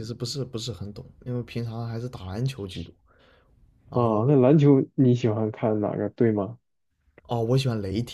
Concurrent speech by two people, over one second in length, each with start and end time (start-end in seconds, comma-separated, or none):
none